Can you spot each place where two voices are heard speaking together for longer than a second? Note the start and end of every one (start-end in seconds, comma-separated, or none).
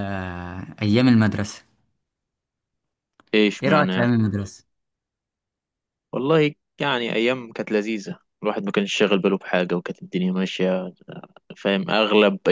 none